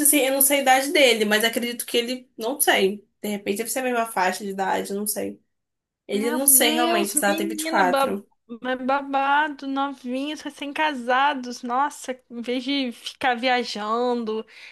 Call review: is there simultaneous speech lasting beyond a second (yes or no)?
yes